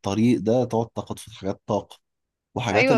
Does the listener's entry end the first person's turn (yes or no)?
no